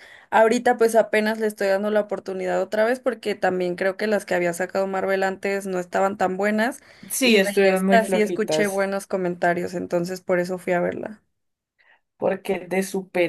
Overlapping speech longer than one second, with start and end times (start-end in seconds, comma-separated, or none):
7.2-8.8